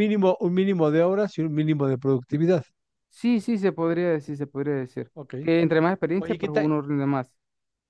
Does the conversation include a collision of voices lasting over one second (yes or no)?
no